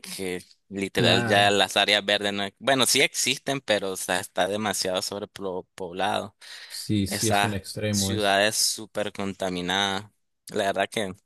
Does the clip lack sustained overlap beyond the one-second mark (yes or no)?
no